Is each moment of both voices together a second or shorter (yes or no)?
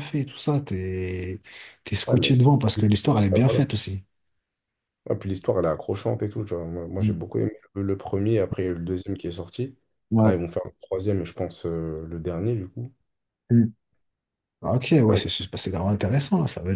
no